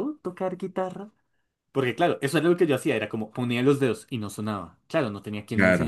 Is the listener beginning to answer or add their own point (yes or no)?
no